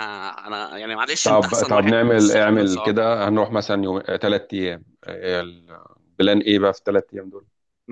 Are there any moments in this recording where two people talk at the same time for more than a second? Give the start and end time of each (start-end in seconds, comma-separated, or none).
1.2-2.9